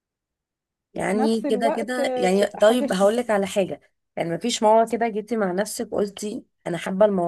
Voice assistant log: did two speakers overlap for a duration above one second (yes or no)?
yes